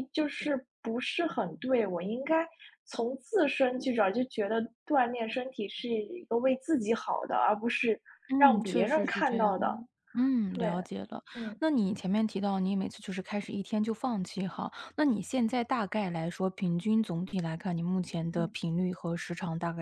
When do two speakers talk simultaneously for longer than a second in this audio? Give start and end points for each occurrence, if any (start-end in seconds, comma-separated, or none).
8.4-9.8